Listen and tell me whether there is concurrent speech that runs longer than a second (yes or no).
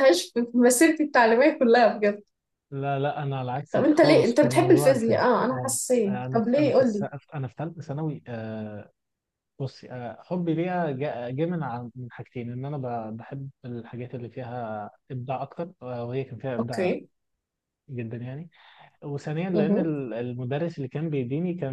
yes